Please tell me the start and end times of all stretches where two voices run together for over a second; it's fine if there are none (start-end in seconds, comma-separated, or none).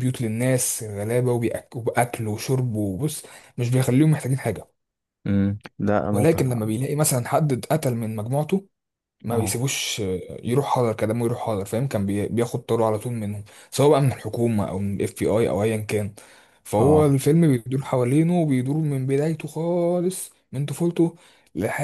none